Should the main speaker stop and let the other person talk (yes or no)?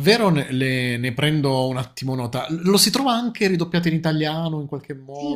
yes